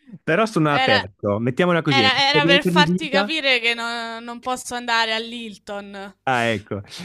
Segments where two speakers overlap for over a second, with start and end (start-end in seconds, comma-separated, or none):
1.9-3.3